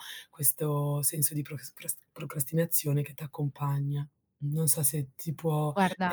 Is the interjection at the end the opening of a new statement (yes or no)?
no